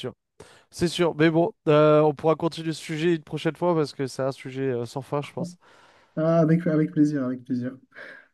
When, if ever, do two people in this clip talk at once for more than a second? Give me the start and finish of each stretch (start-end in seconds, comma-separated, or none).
none